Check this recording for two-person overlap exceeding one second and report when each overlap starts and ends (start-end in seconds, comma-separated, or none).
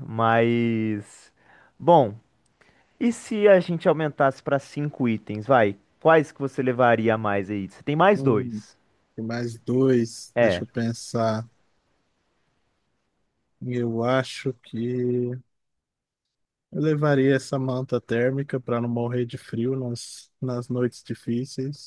none